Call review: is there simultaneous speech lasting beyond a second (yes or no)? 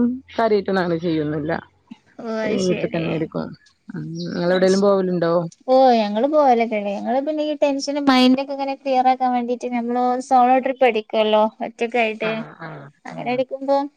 no